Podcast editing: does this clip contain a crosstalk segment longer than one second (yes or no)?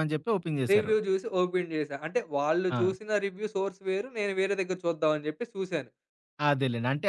no